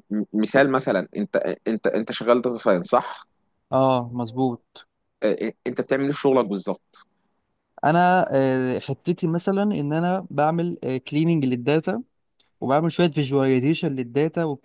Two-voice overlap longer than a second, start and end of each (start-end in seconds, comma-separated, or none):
none